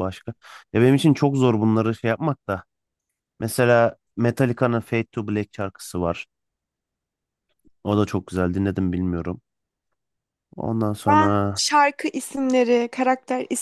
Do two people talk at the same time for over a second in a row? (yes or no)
no